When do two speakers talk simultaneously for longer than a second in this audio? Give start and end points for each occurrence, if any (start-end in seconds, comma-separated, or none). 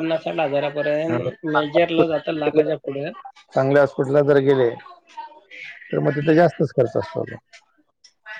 1.1-2.6